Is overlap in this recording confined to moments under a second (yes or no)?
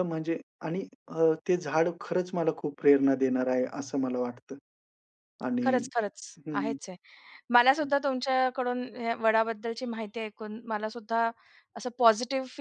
yes